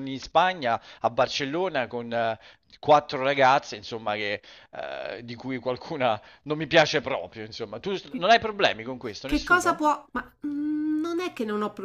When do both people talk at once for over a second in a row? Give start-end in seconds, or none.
none